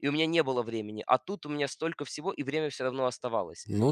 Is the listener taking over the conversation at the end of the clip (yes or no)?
yes